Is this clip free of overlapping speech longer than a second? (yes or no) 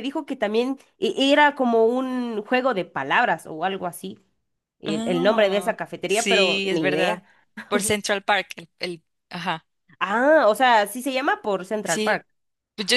no